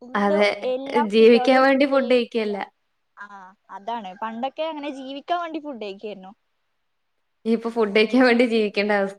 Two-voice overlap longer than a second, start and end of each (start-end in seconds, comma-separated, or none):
none